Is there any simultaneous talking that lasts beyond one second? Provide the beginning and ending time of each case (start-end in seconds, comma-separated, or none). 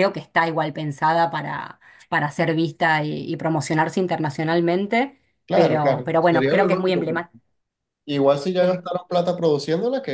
5.5-7.3